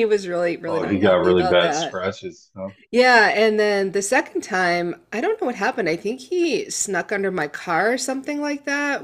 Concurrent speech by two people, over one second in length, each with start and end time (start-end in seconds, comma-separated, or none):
0.7-2.0